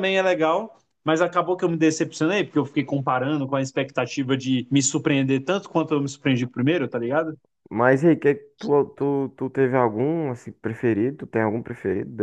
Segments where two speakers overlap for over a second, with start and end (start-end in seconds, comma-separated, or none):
none